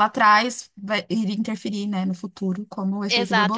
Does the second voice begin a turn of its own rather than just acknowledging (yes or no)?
yes